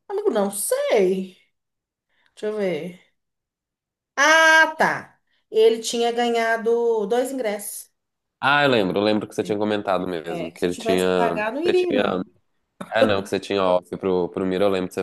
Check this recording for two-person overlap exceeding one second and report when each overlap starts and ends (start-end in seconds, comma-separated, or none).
10.3-12.0